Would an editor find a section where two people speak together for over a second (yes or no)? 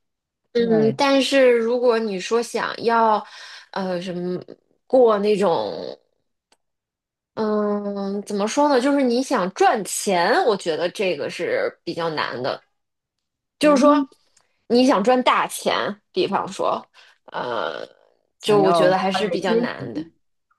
yes